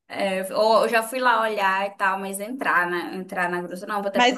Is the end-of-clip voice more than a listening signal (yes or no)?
yes